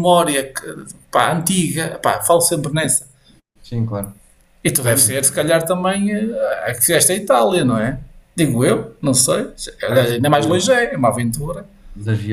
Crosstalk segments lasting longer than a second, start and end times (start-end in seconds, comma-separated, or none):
none